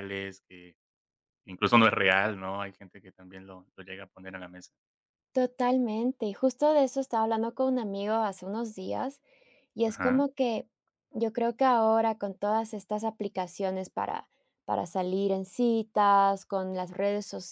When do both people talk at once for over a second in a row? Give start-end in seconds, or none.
none